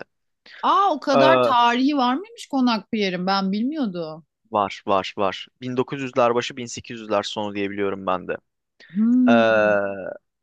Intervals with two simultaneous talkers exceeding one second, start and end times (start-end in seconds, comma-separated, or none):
none